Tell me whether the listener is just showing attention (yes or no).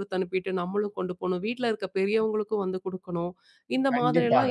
no